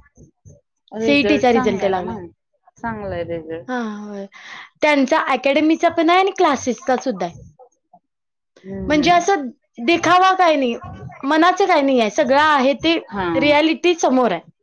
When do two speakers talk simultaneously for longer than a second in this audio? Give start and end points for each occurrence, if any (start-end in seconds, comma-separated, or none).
none